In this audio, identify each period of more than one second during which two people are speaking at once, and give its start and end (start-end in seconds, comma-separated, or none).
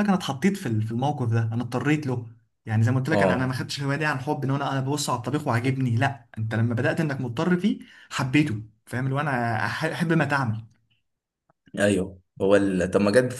none